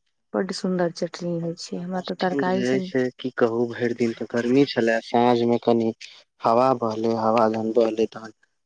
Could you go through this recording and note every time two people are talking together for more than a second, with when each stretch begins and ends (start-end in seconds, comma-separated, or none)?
1.4-2.8